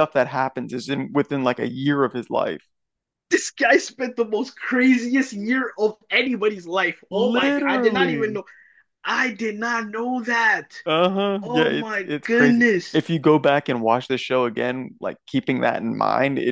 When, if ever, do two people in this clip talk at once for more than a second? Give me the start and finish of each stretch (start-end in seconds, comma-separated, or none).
7.1-8.4, 11.4-13.0